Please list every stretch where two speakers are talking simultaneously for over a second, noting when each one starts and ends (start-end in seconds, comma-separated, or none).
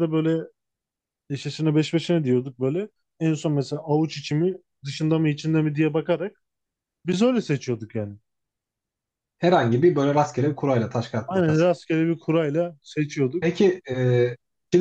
none